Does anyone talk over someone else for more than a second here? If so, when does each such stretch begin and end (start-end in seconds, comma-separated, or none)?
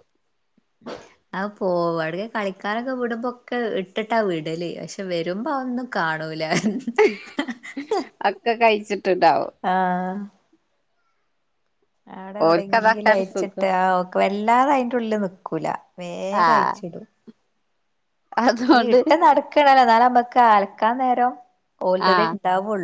12.5-13.7